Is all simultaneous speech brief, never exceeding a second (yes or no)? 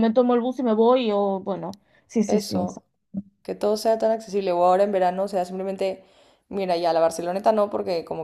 yes